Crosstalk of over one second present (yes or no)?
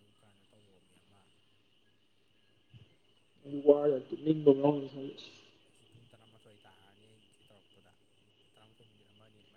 no